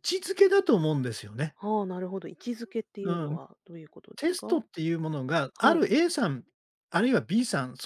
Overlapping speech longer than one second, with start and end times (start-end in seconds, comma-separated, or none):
none